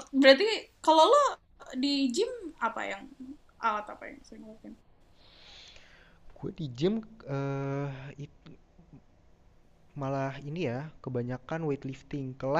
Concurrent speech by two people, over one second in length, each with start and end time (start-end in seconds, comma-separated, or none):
none